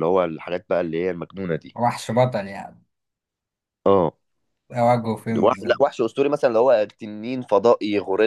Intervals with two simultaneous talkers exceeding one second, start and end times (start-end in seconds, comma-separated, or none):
none